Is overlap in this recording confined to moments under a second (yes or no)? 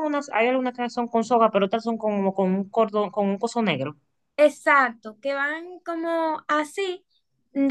yes